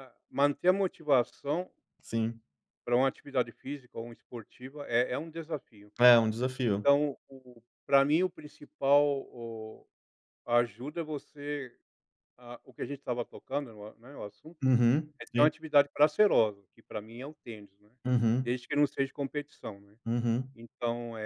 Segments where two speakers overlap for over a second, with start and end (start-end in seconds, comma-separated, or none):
none